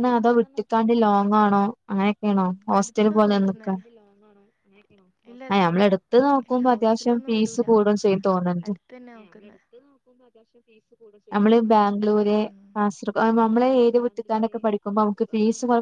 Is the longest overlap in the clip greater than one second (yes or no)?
yes